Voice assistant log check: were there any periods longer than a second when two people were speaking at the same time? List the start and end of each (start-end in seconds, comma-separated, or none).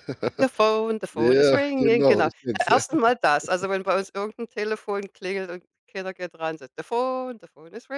1.1-2.8